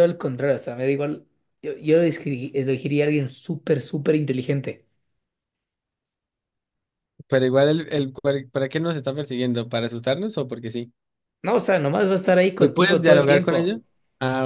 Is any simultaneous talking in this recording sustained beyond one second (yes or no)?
yes